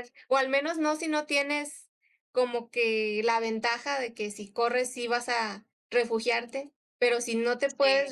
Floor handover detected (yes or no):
no